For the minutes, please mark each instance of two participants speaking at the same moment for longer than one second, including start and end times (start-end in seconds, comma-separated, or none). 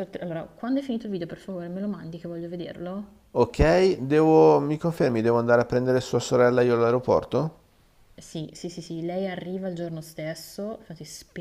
none